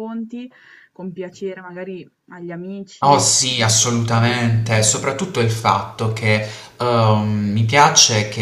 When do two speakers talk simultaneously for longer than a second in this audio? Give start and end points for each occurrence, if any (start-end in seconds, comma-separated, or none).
3.0-4.7